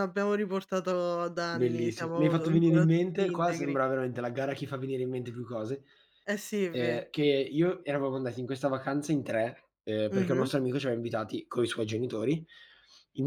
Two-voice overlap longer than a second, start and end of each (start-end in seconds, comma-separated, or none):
1.5-3.8